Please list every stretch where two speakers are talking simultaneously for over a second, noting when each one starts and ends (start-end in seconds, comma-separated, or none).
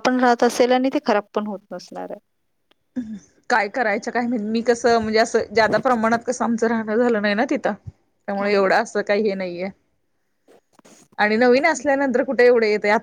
none